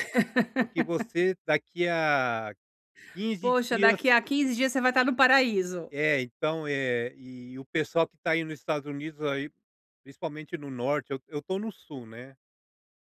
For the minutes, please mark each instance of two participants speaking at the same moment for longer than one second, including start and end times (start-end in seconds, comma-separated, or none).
none